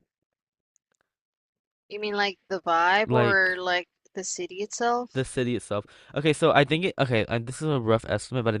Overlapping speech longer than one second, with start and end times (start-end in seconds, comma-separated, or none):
none